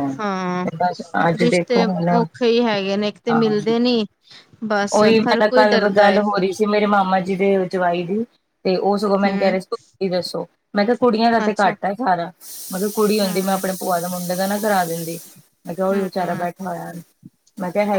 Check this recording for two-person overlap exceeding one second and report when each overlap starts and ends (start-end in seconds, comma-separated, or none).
none